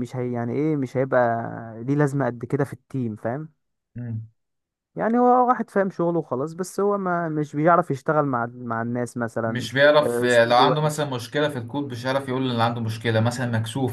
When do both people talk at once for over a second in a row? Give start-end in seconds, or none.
9.5-11.1